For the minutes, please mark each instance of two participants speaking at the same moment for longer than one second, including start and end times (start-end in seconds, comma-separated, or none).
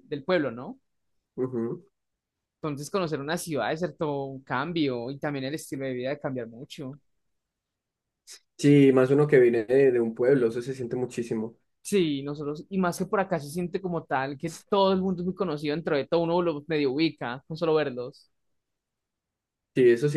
none